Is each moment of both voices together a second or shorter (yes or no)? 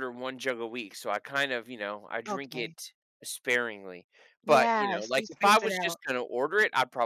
no